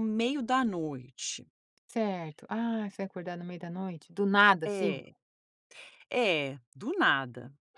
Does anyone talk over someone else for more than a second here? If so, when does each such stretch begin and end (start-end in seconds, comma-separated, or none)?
none